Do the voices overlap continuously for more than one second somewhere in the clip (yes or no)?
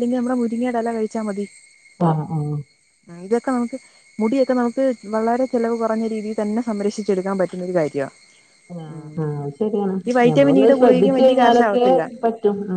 yes